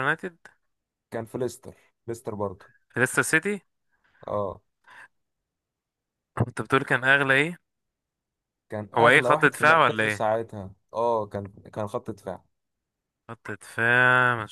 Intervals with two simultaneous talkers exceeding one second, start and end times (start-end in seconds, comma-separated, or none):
9.0-10.3